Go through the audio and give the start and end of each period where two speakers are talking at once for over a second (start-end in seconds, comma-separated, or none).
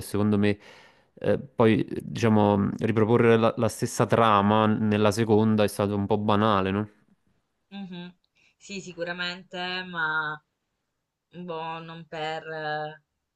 none